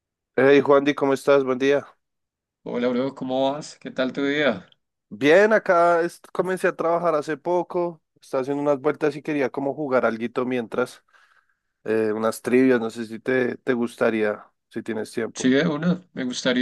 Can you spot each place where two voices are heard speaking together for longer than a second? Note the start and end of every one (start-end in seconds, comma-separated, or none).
none